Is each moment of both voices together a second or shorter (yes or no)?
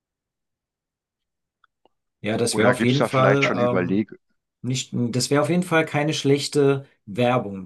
no